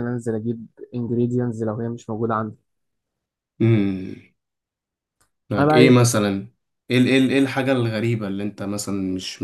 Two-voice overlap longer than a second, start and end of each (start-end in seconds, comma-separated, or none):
none